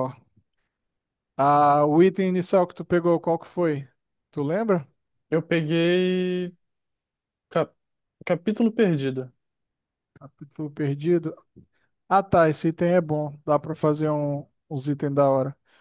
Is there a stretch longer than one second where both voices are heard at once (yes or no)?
no